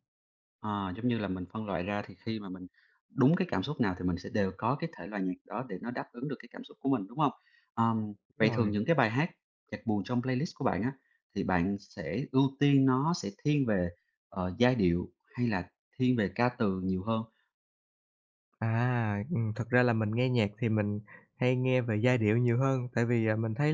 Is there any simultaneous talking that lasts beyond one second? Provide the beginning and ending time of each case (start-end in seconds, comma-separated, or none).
none